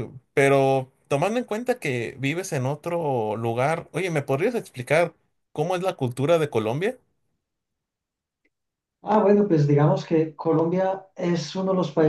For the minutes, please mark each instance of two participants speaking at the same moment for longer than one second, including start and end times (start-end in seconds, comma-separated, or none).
none